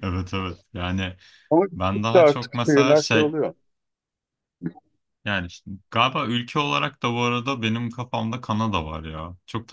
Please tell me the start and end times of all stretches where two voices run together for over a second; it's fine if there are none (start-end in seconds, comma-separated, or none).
1.7-3.4